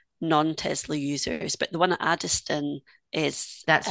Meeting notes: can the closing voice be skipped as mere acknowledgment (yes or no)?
yes